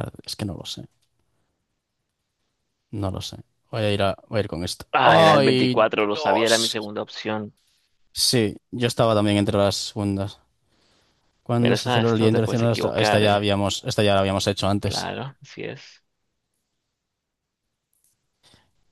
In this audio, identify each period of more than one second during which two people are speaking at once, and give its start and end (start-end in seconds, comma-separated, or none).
4.9-6.8, 11.6-13.4